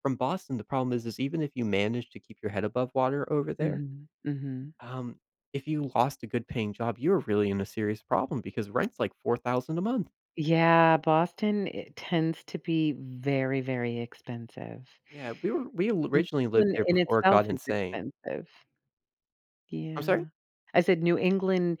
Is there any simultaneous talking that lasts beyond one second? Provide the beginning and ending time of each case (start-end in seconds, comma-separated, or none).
16.1-18.0